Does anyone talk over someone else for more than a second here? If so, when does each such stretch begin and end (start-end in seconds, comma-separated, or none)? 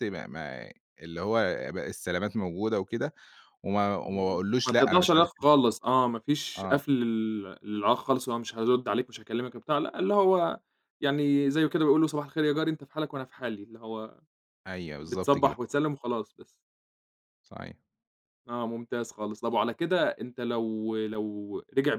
4.0-5.5